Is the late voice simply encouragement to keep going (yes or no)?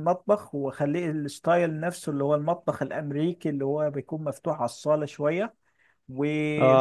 yes